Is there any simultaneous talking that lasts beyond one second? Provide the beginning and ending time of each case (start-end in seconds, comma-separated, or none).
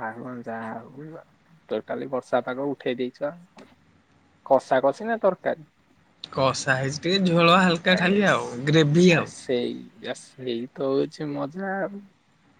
none